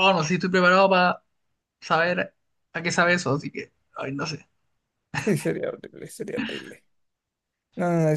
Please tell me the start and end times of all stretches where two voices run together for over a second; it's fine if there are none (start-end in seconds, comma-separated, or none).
none